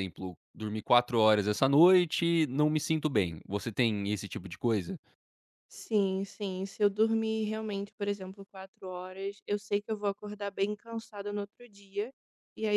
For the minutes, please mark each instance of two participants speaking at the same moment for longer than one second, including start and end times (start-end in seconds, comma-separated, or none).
none